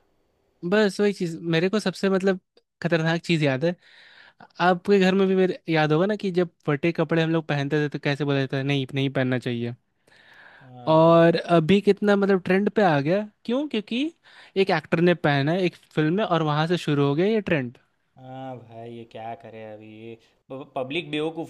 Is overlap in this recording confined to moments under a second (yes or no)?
yes